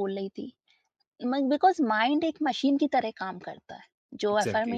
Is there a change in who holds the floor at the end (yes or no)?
no